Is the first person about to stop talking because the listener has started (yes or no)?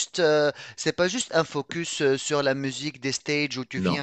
no